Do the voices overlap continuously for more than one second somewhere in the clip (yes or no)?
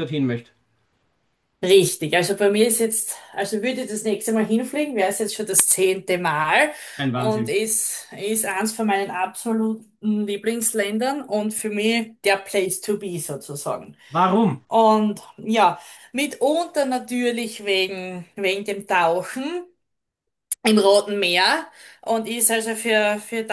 no